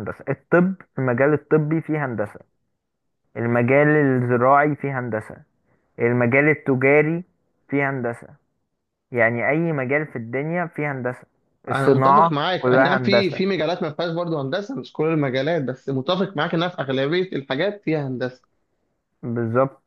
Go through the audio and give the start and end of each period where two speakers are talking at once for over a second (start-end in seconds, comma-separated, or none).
11.7-13.4